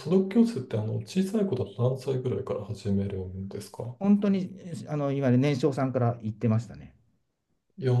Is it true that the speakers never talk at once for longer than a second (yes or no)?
yes